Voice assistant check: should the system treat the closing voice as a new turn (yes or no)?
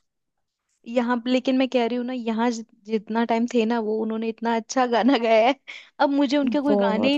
no